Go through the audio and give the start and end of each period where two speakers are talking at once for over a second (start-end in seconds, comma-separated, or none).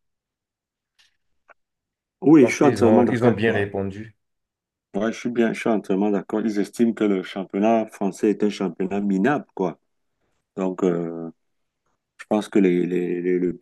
2.4-3.7